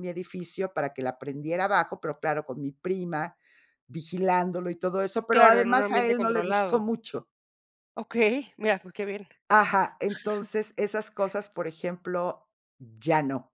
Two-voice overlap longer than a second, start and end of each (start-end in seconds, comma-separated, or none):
5.3-6.8